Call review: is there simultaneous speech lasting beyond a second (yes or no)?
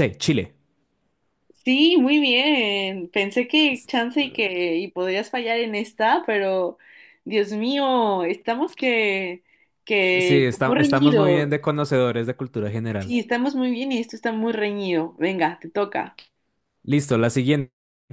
yes